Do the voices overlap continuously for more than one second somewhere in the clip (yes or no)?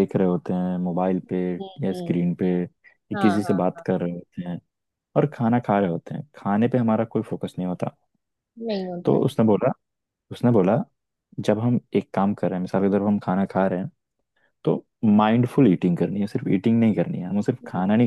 no